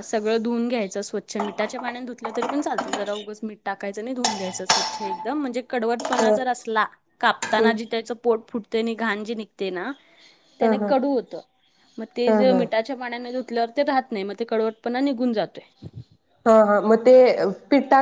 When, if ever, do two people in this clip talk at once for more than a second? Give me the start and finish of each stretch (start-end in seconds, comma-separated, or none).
none